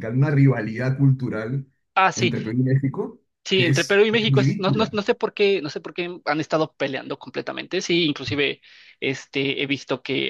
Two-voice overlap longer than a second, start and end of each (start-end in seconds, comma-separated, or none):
3.4-5.0